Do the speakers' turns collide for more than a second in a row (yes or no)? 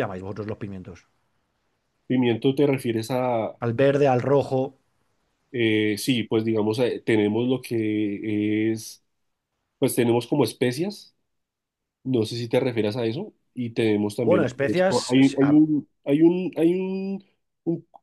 yes